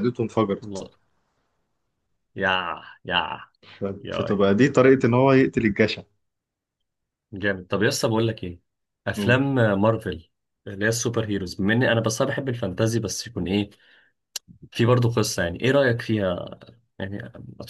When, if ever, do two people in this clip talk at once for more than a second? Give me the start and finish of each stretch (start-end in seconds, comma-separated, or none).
none